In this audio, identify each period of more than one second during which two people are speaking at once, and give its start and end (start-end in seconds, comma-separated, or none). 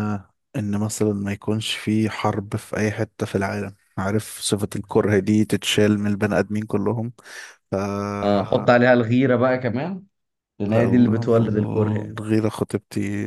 10.7-12.2